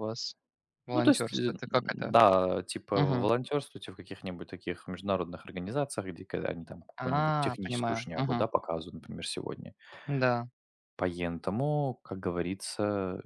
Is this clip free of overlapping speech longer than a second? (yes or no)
no